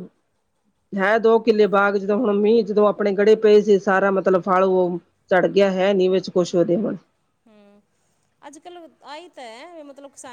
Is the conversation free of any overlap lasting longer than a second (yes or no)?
yes